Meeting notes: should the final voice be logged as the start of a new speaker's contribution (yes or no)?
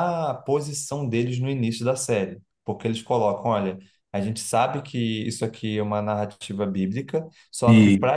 no